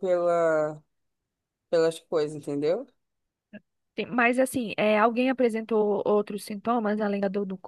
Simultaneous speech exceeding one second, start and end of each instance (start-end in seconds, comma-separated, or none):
none